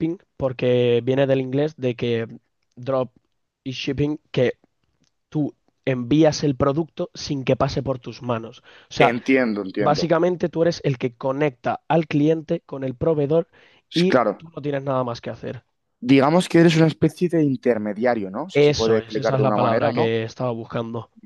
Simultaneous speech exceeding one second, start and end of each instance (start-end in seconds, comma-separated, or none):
18.5-20.2